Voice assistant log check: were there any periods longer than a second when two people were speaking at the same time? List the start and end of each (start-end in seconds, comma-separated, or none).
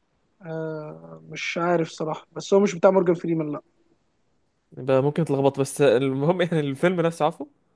none